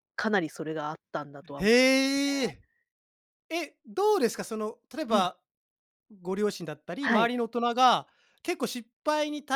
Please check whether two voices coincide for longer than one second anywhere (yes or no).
no